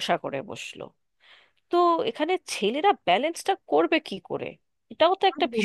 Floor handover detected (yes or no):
yes